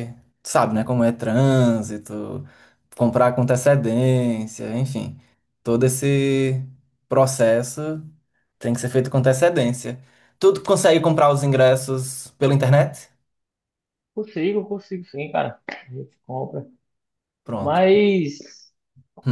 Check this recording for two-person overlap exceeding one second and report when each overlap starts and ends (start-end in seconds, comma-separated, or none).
none